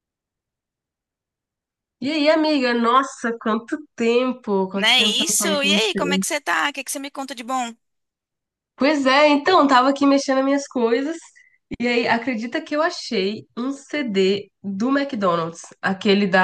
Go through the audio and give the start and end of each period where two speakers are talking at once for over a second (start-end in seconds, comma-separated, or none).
4.7-6.2